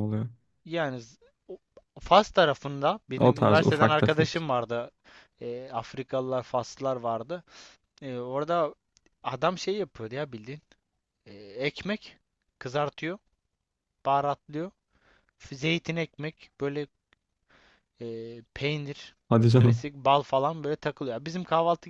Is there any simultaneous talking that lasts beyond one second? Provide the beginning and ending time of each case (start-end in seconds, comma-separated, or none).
3.2-4.5